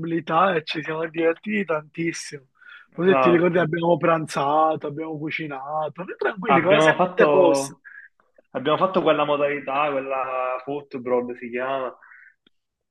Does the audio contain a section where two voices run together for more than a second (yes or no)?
yes